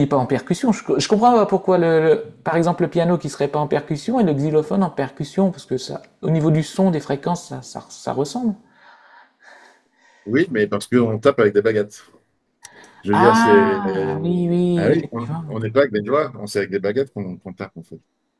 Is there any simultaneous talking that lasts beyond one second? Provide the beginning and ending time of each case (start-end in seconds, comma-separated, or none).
13.1-15.6